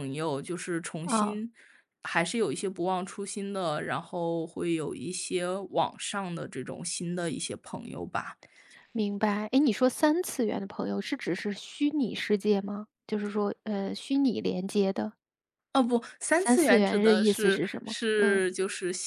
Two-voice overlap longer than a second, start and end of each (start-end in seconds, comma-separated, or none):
16.3-18.4